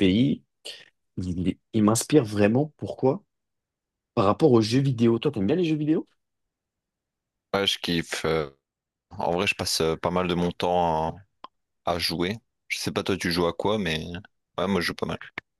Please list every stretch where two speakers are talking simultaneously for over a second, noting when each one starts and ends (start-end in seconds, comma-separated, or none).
none